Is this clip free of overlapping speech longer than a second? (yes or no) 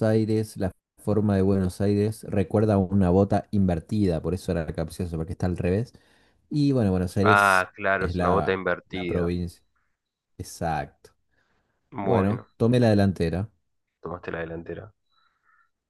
no